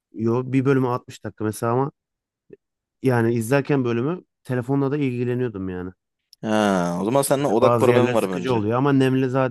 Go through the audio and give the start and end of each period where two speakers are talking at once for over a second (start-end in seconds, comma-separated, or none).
7.4-8.6